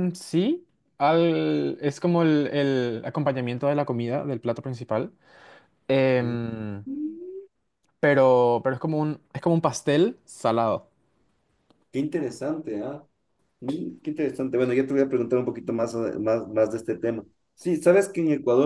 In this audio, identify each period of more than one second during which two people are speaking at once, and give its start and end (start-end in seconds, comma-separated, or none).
none